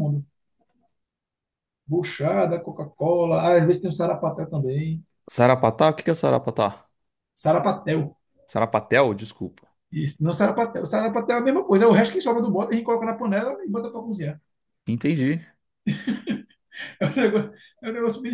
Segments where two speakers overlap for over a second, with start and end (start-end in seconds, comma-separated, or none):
none